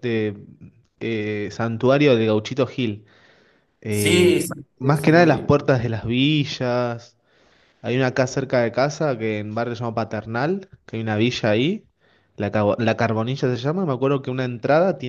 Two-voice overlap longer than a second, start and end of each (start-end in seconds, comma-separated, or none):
3.9-5.5